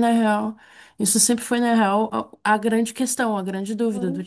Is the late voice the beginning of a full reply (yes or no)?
no